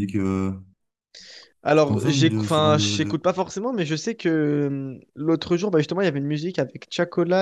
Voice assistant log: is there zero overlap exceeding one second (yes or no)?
no